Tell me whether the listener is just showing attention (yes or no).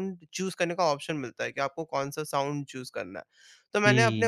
yes